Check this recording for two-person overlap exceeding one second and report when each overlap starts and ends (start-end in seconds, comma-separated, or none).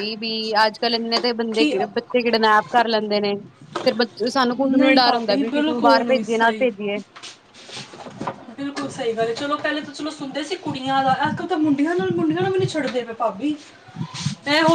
4.6-6.7